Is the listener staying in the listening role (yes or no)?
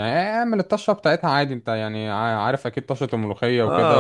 no